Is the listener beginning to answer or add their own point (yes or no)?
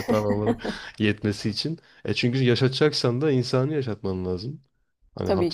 no